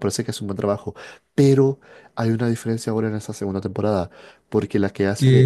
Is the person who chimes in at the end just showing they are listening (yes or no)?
no